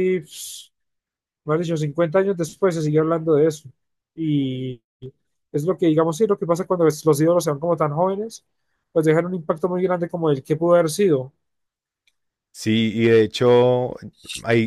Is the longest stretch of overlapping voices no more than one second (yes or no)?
yes